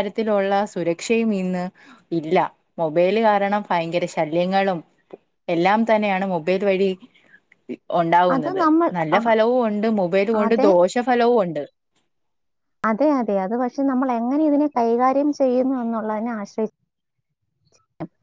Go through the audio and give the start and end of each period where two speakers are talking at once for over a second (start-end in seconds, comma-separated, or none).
none